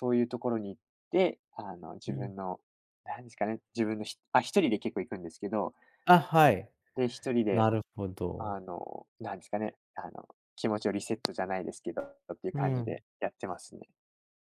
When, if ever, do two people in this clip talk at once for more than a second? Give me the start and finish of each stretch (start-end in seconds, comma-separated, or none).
none